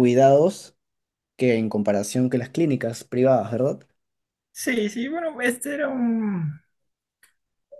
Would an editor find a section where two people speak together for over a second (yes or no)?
no